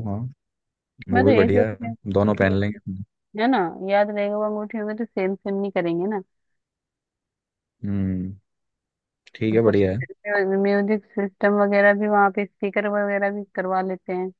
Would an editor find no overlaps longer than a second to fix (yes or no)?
no